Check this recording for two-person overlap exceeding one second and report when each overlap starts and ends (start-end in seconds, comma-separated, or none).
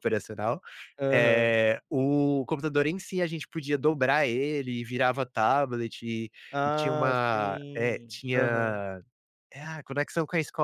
6.5-8.8